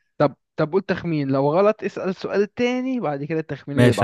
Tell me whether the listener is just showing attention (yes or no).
no